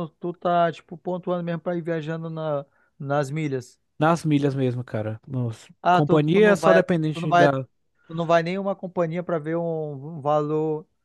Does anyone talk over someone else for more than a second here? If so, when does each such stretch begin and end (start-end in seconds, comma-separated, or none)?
5.8-7.5